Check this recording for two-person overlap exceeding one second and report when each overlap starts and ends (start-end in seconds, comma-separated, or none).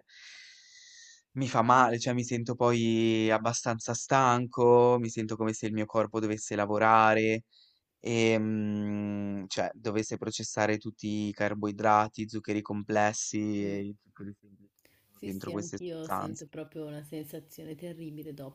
15.1-16.4